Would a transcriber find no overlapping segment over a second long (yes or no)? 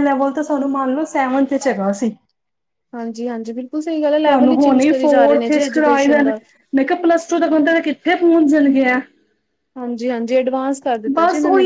no